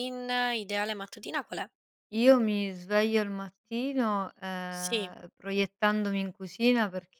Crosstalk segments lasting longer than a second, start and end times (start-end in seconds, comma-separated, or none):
none